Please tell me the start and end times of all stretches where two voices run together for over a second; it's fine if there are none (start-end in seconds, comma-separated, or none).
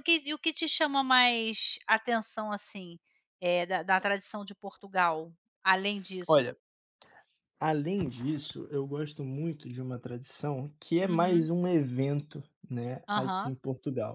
none